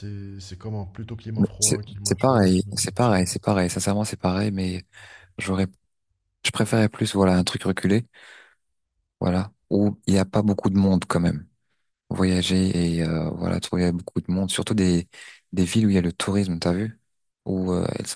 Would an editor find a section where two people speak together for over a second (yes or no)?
yes